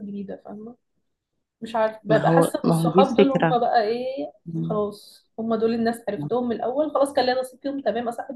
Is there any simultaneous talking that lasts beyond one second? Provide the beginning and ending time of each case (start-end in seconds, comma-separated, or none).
2.1-3.6